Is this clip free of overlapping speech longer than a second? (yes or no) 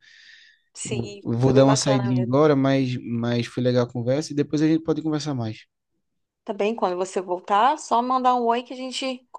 no